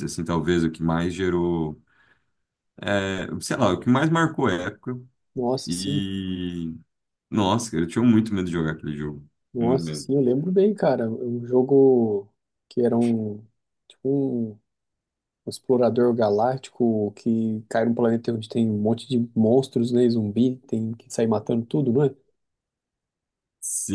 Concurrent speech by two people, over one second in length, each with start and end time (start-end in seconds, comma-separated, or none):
none